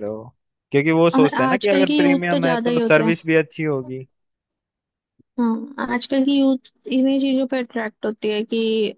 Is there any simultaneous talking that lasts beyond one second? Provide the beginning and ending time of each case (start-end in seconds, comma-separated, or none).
1.1-3.1